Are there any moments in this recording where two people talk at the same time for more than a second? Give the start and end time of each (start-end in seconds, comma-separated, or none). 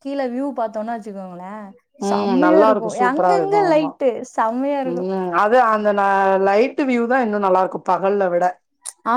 2.1-3.9